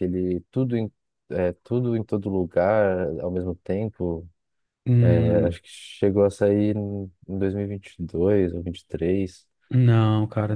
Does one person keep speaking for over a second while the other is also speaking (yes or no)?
no